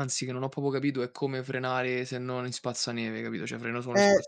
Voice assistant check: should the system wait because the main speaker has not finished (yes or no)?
no